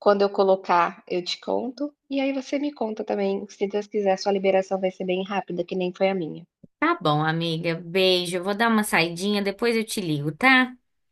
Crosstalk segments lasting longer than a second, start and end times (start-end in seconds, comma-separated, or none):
none